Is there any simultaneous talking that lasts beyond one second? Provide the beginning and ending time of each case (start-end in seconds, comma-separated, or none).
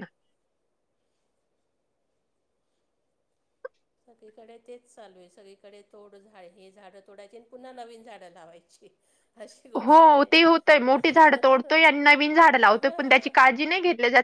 none